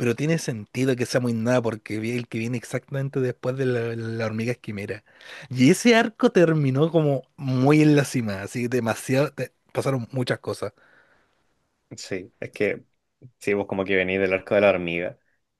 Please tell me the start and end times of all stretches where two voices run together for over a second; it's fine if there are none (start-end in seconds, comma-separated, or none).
none